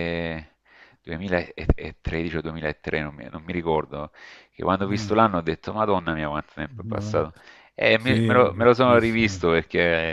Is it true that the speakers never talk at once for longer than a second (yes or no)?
no